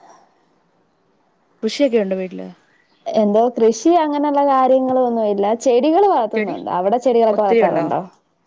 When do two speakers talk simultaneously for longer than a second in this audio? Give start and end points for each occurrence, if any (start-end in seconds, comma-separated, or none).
none